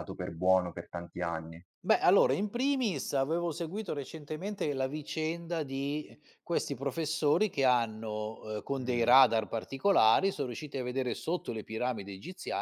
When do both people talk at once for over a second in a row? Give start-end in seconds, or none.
none